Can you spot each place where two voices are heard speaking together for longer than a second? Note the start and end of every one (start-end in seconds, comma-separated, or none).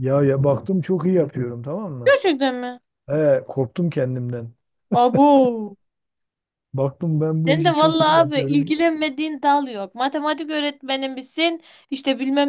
7.5-8.7